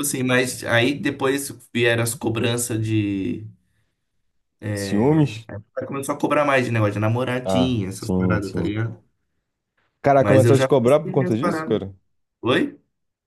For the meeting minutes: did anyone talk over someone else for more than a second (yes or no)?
yes